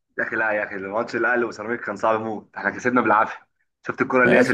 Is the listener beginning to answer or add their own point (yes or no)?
yes